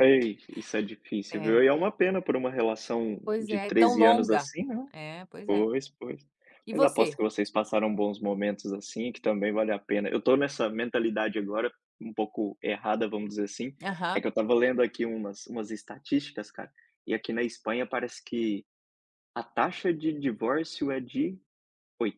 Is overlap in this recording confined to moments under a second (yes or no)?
no